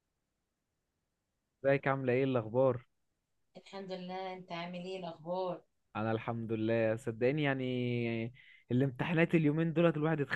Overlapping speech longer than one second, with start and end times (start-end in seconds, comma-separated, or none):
none